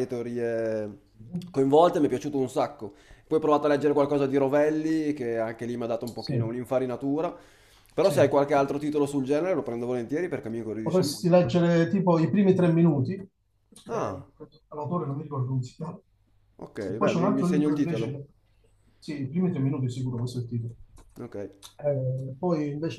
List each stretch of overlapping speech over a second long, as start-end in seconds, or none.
16.9-18.2